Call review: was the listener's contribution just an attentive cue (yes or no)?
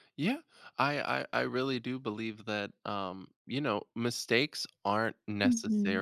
yes